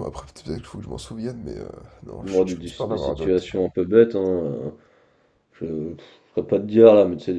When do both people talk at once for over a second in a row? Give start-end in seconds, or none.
2.2-3.5